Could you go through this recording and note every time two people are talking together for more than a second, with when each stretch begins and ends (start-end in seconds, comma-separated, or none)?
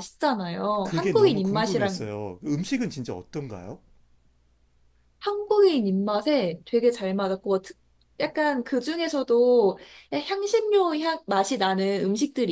0.8-2.0